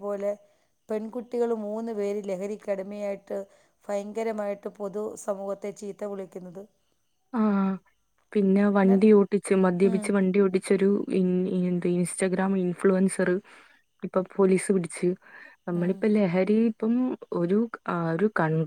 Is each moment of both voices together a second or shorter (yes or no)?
yes